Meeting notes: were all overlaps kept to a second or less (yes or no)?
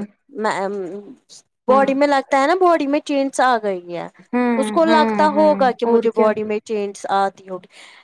no